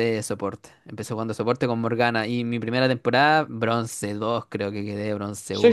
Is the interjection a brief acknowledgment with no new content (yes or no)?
no